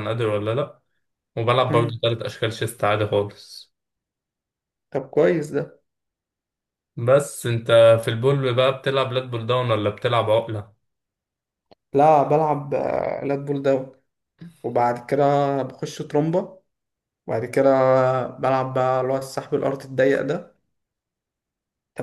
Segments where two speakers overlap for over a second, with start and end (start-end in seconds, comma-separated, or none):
none